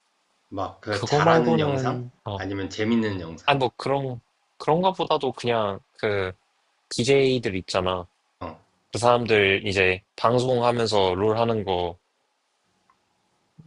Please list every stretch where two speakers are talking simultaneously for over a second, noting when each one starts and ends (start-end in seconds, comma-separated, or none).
0.9-2.4